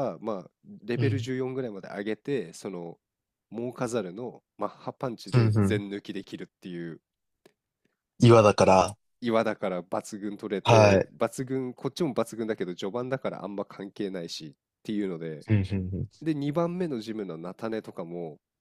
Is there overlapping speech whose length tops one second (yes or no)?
no